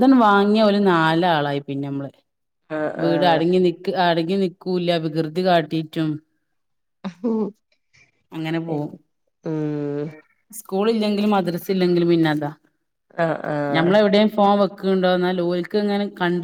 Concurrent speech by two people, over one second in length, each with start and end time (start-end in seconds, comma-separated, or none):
none